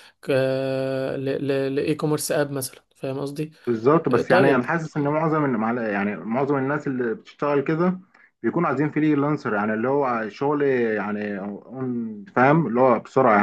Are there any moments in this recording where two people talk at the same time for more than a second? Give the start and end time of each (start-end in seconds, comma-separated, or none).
none